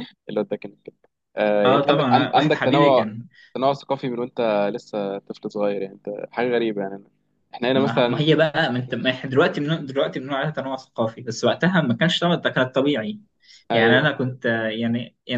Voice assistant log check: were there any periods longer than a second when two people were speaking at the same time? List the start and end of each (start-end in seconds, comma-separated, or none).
1.6-3.0